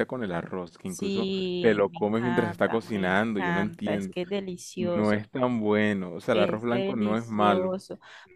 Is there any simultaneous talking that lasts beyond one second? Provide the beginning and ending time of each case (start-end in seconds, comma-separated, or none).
0.8-4.1, 6.3-7.8